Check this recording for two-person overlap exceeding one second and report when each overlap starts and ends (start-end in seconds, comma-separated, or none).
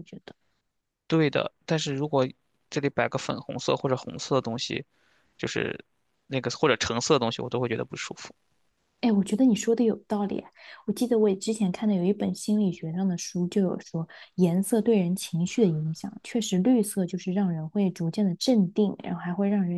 none